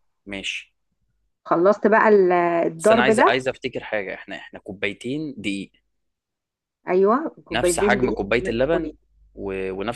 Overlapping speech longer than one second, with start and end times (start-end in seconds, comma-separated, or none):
7.5-8.9